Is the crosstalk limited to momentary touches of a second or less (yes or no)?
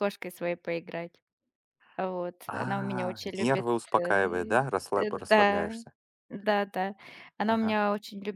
no